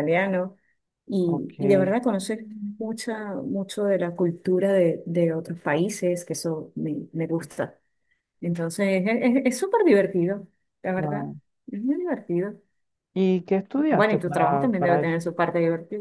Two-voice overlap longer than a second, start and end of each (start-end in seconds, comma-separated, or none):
13.8-15.2